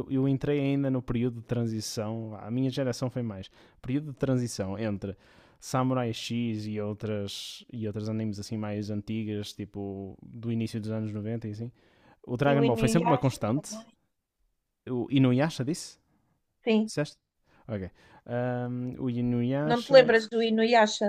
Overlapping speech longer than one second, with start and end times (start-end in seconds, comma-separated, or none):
12.5-13.8